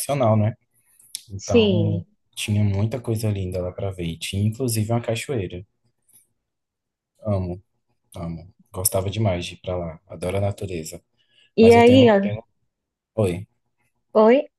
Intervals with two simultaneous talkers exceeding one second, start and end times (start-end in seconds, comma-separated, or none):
none